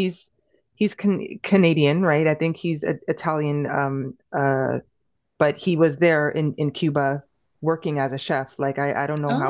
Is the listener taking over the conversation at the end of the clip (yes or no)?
no